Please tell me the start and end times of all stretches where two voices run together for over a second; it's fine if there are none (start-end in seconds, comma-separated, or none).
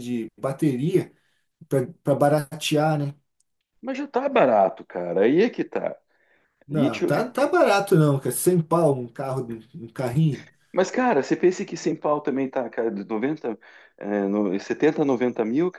none